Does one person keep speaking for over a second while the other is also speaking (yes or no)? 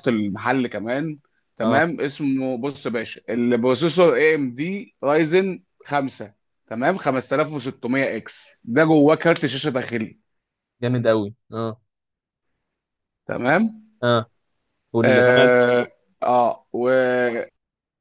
no